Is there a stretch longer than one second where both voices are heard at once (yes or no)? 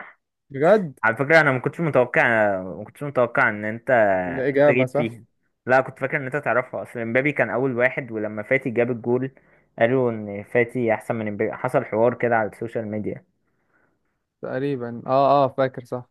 no